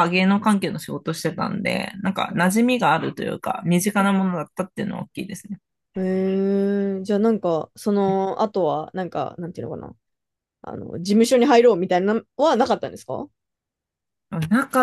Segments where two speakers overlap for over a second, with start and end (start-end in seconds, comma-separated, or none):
none